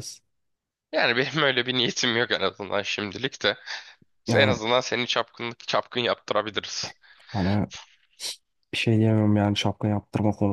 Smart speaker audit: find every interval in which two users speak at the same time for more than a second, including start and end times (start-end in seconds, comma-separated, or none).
none